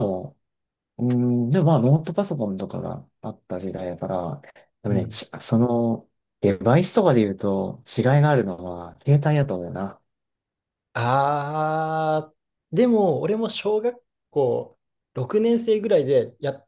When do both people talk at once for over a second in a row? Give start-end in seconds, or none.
none